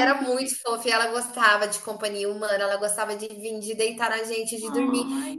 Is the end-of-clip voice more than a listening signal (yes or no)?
no